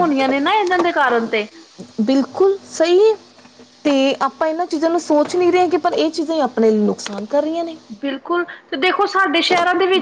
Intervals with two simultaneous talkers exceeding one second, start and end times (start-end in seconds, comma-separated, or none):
none